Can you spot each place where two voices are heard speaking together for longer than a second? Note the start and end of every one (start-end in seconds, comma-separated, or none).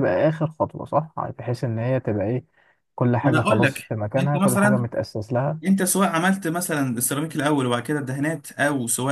3.2-4.9